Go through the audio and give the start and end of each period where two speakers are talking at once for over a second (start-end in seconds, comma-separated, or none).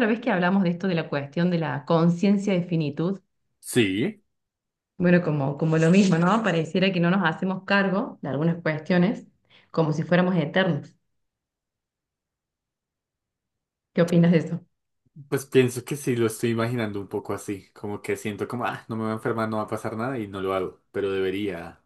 none